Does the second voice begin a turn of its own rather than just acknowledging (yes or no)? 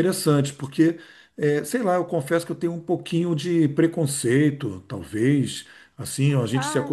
no